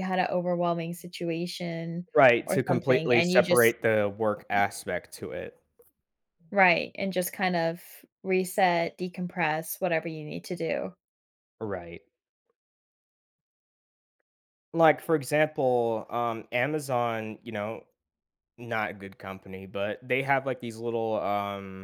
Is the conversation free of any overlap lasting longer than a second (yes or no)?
no